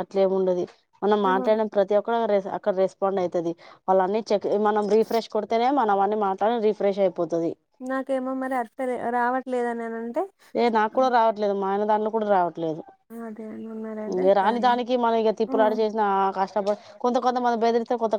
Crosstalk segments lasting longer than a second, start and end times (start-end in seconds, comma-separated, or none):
none